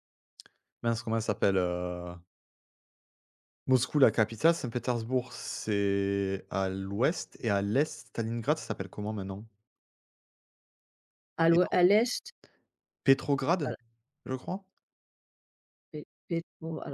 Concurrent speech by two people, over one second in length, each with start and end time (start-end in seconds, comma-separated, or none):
none